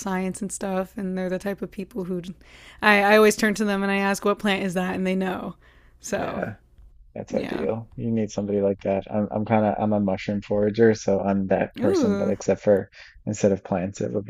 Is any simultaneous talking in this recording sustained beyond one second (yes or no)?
no